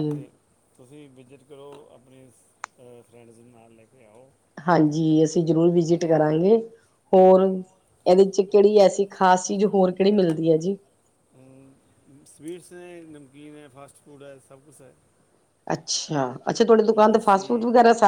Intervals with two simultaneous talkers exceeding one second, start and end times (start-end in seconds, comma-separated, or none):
none